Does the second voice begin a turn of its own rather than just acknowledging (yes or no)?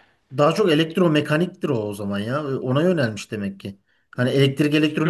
yes